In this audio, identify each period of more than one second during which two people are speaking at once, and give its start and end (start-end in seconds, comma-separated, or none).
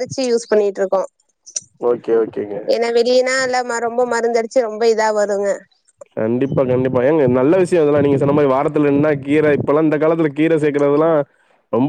none